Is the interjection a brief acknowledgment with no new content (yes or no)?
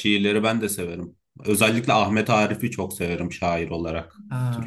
no